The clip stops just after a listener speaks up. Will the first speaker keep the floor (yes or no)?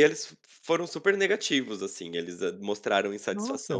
yes